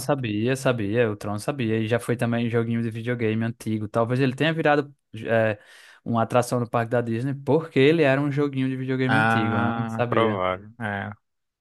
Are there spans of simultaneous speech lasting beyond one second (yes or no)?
yes